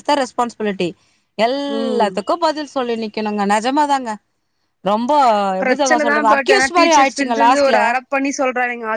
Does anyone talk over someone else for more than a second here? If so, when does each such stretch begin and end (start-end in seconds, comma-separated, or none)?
5.6-7.8